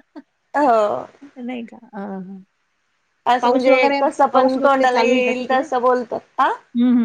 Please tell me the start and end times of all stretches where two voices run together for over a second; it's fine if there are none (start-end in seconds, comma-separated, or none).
3.4-5.6